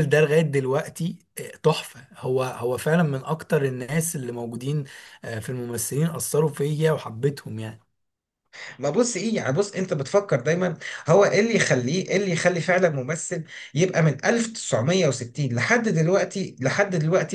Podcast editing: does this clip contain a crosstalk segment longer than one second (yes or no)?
no